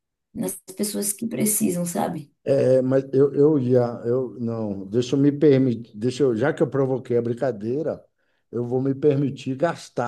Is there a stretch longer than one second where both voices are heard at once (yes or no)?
no